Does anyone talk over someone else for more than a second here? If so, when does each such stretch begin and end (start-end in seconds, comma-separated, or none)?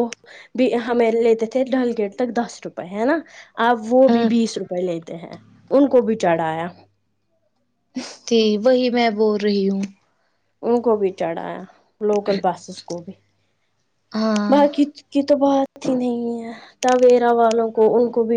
none